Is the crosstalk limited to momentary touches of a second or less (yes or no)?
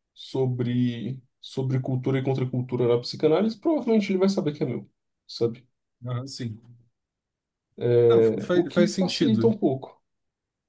no